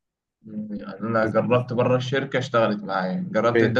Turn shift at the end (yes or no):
no